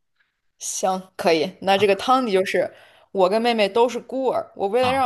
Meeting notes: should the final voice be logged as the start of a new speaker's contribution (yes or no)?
no